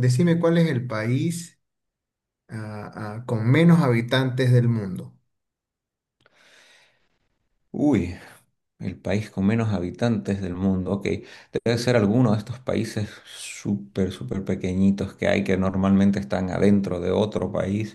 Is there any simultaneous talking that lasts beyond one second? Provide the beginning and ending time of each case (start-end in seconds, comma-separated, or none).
none